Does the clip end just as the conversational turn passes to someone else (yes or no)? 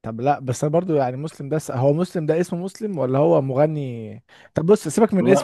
no